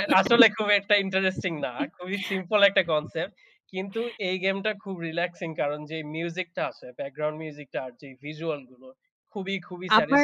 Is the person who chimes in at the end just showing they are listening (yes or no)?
no